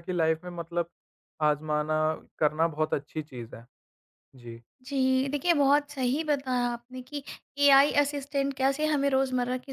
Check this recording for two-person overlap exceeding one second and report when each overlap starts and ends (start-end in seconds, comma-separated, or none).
none